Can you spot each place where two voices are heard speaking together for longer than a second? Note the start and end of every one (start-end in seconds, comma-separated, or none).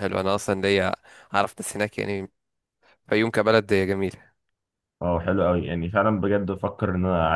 none